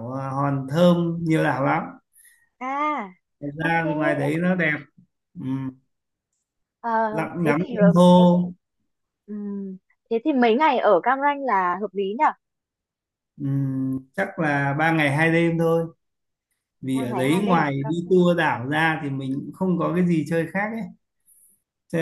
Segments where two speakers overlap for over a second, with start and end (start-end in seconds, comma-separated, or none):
16.9-18.2